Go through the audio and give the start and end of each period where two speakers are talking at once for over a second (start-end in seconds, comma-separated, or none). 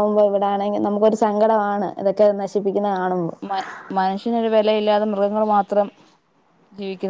none